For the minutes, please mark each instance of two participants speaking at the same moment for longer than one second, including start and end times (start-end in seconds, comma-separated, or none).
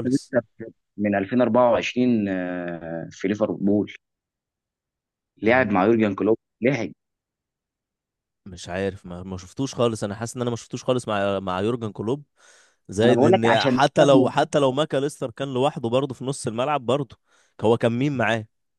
13.0-14.5